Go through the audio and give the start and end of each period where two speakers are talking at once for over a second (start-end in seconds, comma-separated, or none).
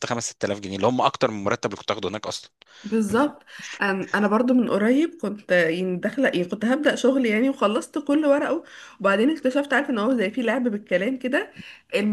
none